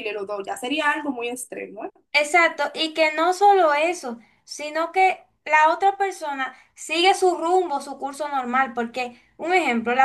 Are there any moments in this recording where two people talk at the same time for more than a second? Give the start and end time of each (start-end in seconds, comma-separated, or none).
none